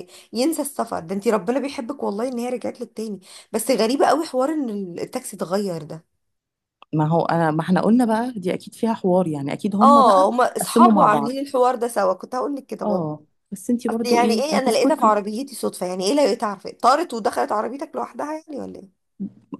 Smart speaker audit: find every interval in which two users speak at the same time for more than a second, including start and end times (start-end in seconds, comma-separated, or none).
9.8-11.4, 13.9-15.2